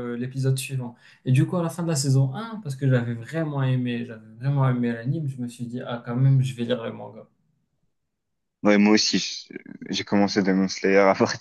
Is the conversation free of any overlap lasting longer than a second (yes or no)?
yes